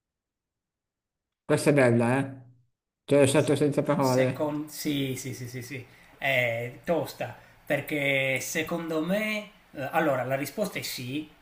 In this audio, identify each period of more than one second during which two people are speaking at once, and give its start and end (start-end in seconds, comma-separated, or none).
none